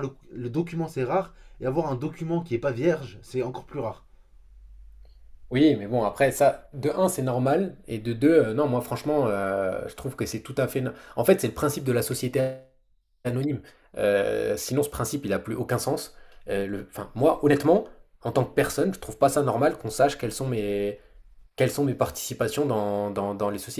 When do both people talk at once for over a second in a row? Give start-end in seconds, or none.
none